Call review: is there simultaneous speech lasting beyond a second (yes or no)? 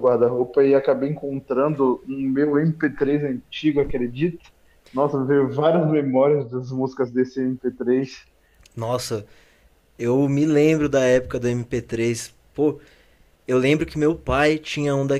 no